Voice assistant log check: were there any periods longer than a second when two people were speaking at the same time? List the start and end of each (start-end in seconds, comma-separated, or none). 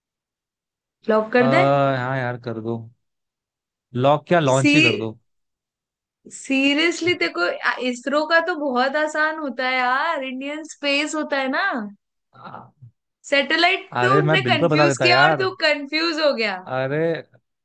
14.0-15.5